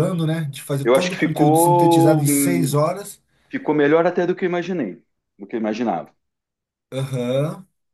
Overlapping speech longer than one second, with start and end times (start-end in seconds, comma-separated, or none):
0.8-2.8